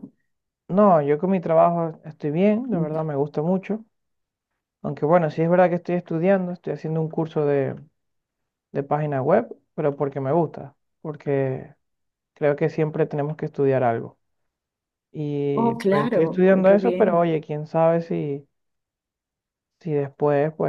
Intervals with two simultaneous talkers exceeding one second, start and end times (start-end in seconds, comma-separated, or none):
15.6-17.3